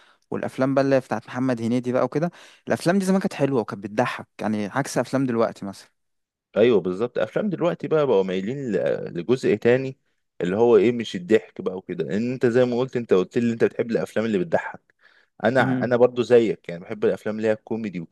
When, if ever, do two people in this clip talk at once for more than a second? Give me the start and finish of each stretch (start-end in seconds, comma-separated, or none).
none